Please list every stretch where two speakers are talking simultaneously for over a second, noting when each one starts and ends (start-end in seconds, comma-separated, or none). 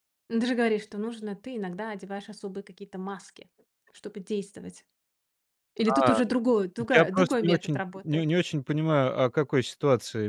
6.9-8.3